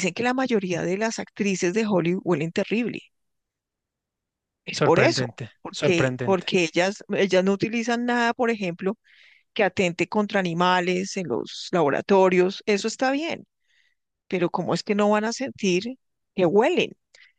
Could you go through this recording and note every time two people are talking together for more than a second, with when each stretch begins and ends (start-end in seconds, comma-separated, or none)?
4.7-6.5